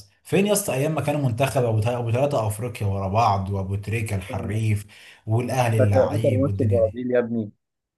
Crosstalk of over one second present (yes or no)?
yes